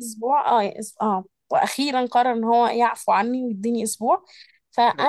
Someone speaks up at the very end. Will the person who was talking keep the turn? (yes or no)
yes